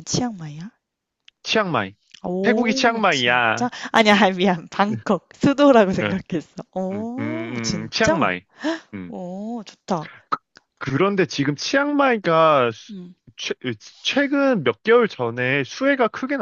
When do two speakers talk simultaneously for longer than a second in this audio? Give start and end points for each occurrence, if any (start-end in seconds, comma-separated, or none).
2.4-3.7, 6.9-8.2